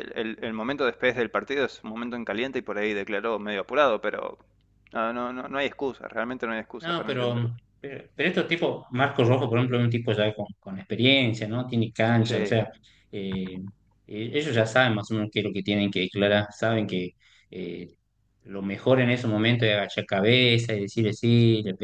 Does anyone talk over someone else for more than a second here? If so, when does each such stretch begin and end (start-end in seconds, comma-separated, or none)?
none